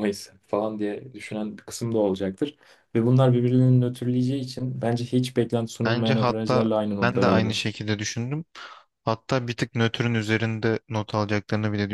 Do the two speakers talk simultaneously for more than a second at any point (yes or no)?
yes